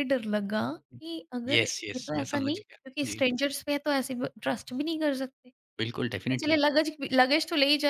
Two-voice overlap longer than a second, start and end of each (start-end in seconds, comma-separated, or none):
1.5-3.2